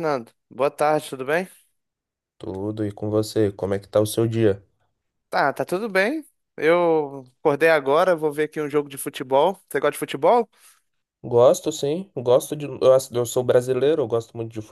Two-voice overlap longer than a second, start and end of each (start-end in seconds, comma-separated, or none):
none